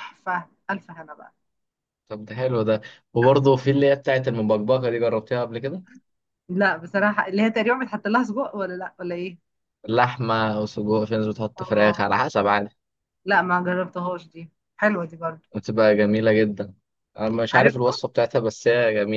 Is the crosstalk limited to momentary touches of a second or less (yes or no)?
yes